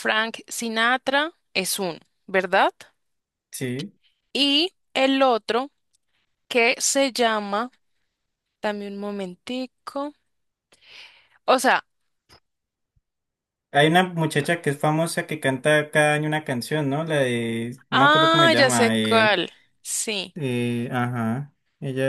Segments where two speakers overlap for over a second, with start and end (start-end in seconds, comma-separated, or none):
17.9-19.4